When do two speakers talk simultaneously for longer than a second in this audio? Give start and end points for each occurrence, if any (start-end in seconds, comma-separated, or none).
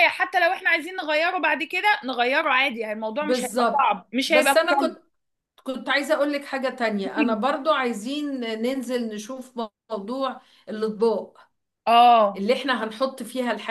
3.2-5.0